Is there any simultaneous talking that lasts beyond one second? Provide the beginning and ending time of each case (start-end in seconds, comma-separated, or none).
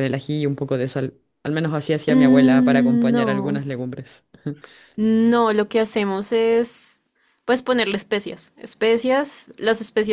2.1-3.6